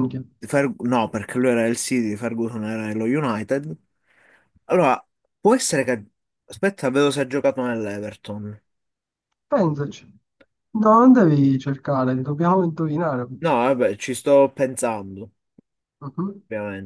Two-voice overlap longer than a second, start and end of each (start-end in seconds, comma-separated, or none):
none